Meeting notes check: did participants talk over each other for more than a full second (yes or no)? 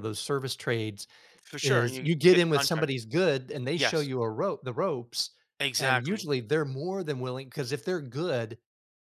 yes